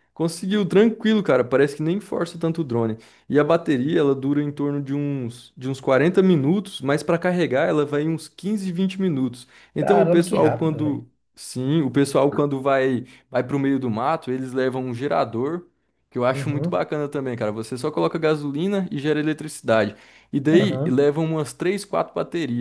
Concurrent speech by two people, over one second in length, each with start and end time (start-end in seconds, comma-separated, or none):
9.8-11.0